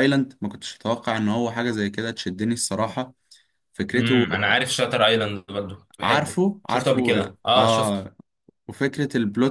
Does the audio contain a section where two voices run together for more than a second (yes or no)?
yes